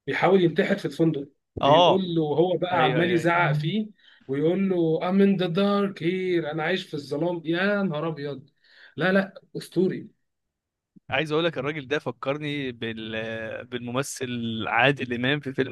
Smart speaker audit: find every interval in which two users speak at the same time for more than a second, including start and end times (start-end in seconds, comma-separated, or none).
none